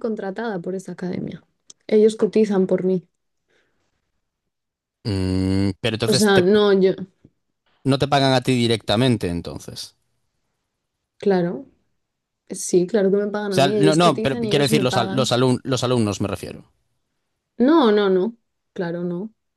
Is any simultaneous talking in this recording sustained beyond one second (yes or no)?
yes